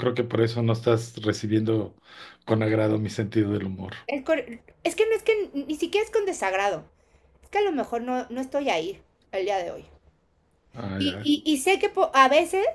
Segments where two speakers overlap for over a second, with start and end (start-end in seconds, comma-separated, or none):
none